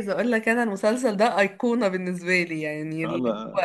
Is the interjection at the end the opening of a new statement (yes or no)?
no